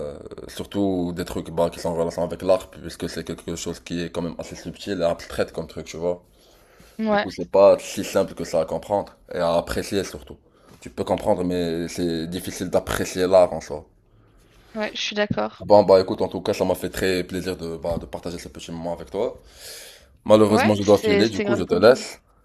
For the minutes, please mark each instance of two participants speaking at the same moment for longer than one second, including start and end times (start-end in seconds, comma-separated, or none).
20.5-21.9